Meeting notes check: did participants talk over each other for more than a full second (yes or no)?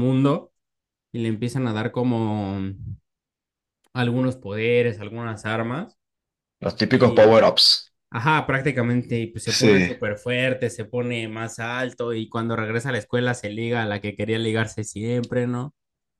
no